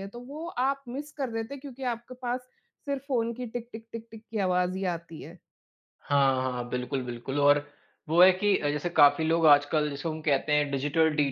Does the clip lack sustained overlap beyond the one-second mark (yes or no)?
yes